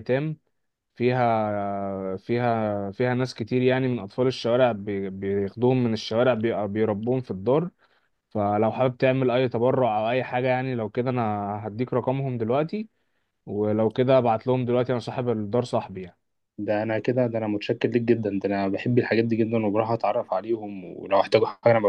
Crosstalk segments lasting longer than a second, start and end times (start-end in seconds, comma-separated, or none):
none